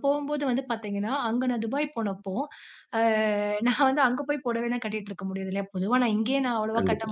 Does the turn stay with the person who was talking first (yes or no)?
yes